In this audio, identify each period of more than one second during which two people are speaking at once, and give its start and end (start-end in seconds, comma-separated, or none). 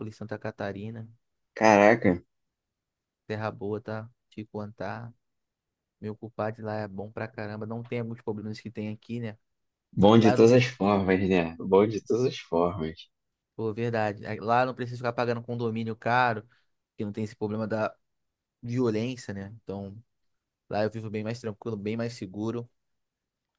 none